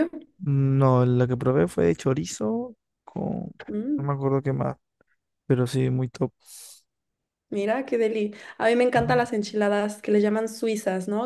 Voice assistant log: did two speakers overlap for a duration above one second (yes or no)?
no